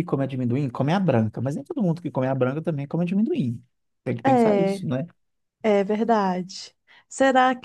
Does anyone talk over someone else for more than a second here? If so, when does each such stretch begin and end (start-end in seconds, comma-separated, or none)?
none